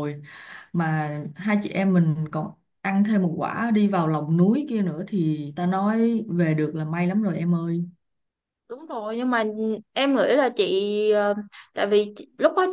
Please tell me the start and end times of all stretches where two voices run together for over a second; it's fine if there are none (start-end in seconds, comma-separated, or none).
none